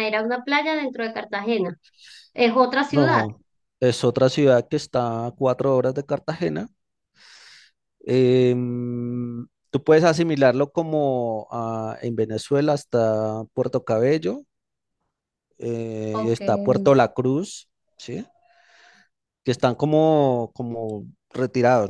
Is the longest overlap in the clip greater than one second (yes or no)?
no